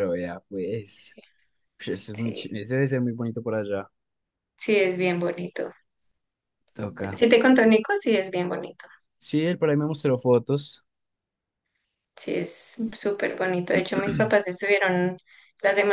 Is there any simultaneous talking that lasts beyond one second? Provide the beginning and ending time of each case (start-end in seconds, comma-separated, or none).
none